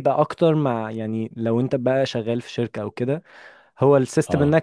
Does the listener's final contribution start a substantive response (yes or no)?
no